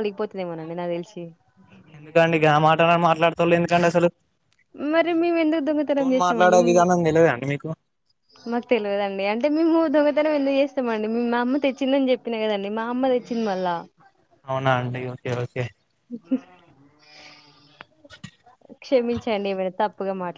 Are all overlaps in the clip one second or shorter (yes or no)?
yes